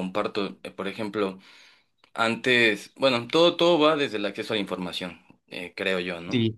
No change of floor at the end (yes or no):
yes